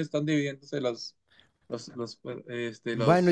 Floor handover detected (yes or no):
yes